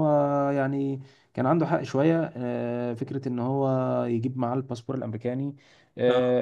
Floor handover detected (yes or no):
no